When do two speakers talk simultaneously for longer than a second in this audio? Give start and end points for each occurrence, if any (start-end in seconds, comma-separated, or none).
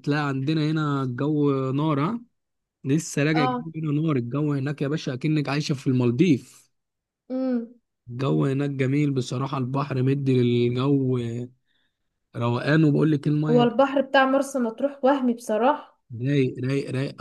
none